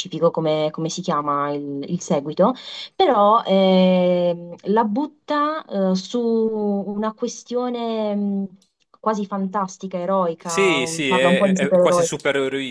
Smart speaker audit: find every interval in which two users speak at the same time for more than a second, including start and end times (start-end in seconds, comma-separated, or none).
10.4-12.1